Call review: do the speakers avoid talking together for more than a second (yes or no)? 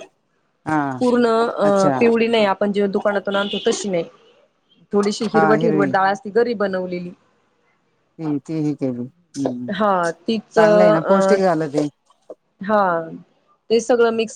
no